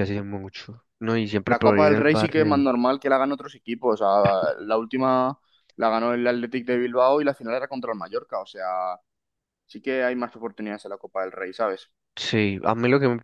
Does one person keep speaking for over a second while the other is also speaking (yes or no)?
yes